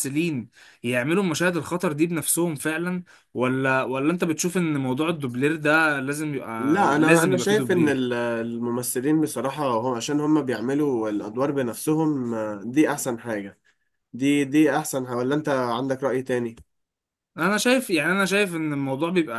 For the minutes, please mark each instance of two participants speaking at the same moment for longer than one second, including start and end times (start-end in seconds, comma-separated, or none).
6.6-8.1